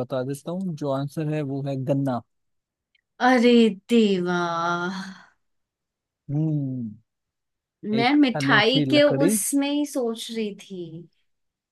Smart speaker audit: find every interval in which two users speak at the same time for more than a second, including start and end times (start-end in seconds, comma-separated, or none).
8.0-9.4